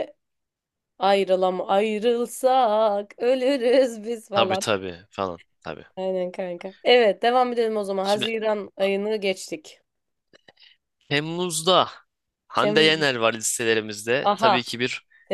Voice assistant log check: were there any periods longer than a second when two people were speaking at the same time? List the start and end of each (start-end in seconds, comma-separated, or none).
none